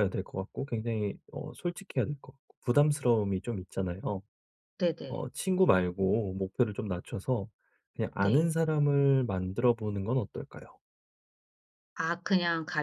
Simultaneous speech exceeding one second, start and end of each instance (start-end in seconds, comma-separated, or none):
none